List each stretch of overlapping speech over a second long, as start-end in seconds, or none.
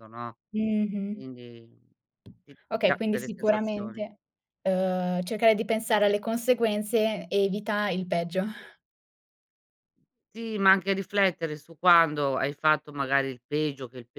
2.7-4.0